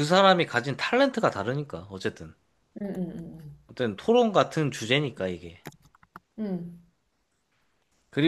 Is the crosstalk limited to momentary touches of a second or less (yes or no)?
yes